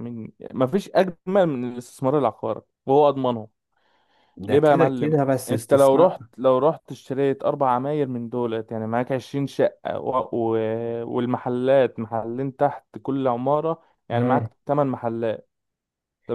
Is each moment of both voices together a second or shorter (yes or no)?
no